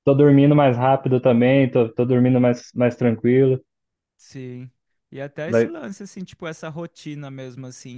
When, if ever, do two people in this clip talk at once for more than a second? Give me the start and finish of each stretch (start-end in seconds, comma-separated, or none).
none